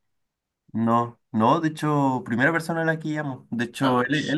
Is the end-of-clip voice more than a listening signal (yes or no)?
no